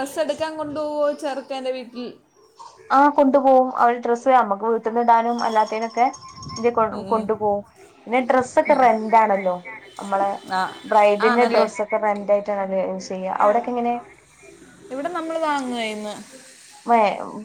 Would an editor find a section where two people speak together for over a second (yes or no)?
no